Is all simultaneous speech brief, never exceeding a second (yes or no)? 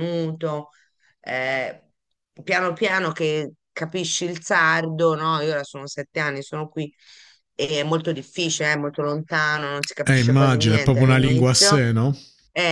no